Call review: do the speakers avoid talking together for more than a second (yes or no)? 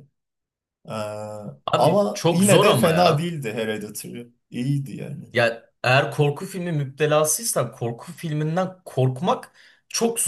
no